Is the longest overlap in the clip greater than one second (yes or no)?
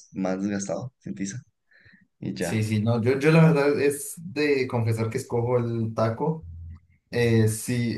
no